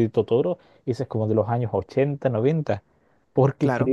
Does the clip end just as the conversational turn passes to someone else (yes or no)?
no